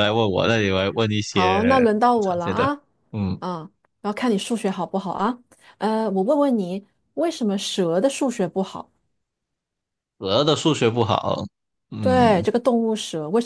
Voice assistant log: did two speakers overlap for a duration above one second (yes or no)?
yes